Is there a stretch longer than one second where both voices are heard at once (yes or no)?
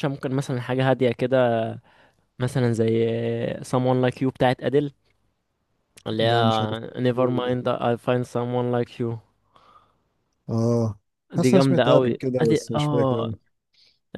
yes